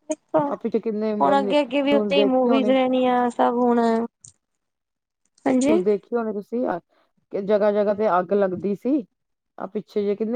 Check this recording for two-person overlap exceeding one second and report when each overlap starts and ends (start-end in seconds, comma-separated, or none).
0.5-2.7